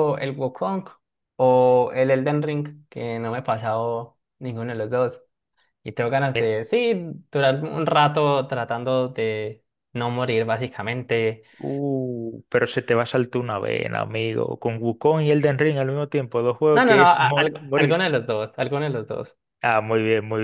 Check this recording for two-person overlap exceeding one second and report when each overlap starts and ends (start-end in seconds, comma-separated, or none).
16.7-18.1